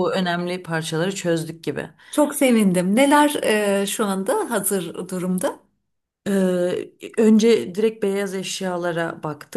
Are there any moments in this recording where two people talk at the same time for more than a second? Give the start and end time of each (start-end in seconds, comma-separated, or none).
none